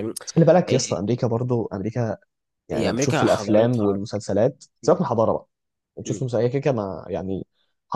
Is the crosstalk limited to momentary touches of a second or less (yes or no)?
no